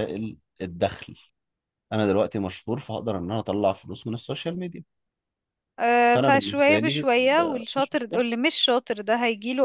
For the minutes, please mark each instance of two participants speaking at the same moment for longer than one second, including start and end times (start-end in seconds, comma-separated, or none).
6.1-8.1